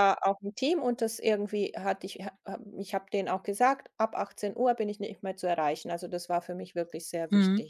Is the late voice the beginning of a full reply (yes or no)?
yes